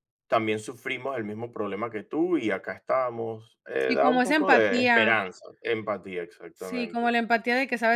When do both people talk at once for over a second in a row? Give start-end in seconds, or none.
3.8-5.1